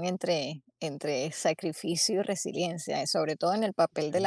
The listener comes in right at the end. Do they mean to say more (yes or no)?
no